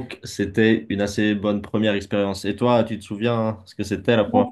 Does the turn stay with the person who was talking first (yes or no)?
no